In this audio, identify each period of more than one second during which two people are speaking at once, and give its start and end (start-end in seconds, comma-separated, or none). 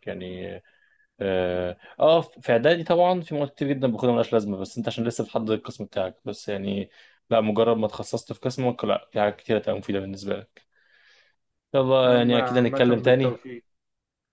12.1-13.3